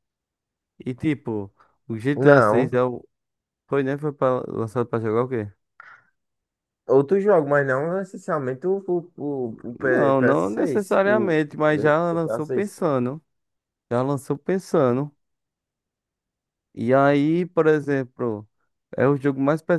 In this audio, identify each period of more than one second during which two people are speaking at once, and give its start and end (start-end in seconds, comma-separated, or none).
9.8-12.8